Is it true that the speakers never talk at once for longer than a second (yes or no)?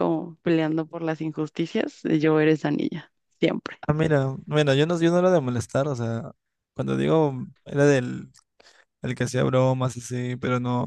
yes